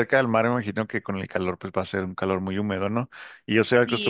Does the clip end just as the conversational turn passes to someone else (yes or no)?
yes